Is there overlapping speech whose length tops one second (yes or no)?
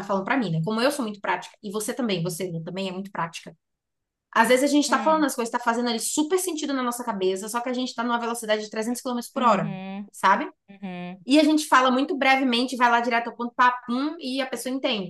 no